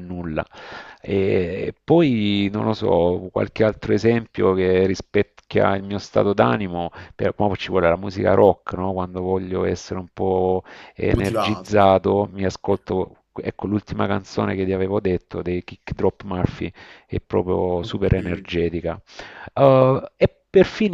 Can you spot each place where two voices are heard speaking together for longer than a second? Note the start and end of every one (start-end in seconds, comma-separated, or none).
11.1-12.3